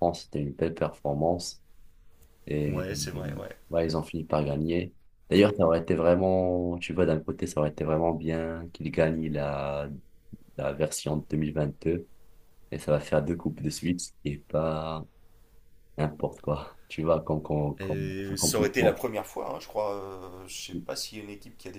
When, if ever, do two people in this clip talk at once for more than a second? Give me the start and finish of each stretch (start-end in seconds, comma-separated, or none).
17.8-19.0